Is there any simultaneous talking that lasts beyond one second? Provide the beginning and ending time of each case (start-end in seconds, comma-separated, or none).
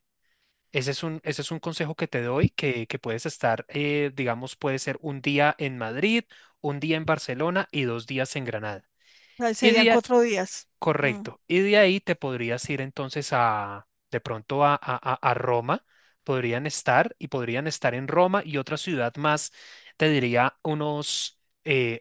none